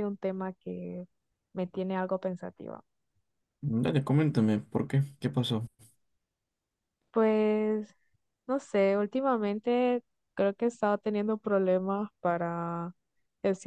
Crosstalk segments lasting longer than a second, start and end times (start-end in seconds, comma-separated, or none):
none